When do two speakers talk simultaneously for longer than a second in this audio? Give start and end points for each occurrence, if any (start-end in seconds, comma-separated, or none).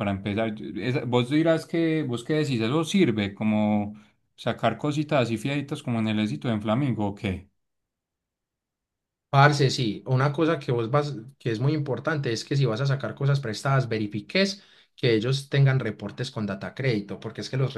none